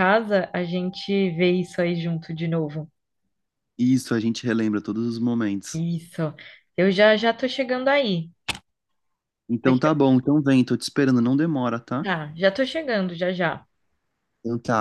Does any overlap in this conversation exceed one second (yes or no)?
no